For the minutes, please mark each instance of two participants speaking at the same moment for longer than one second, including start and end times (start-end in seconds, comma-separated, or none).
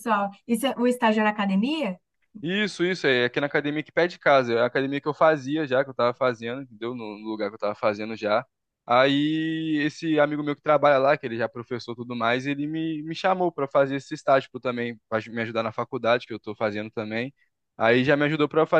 none